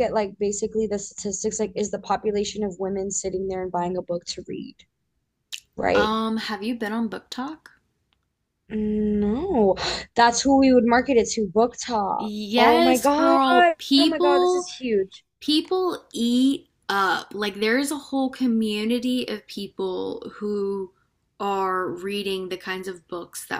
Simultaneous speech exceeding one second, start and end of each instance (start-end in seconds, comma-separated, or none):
12.2-14.7